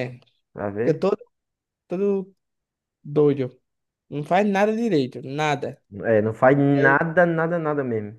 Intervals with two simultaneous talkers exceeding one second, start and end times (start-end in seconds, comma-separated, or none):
none